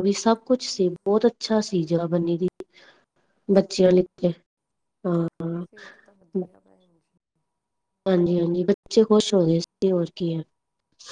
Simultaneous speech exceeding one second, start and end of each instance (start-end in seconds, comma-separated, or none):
none